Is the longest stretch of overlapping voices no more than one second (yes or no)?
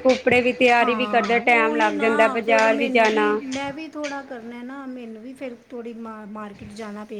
no